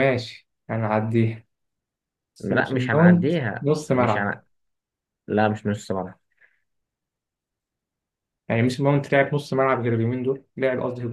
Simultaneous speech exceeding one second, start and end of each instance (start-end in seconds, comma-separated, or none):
2.4-4.3